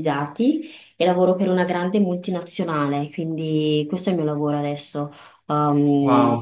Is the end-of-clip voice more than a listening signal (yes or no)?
yes